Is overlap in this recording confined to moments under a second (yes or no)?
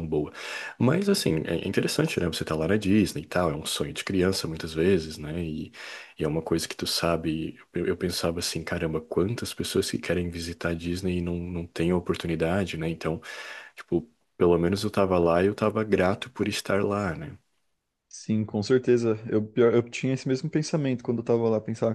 yes